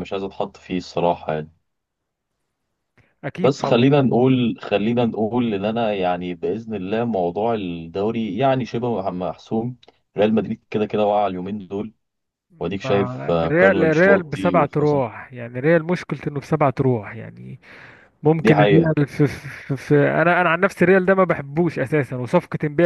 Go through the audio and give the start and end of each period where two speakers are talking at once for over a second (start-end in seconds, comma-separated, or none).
12.8-15.0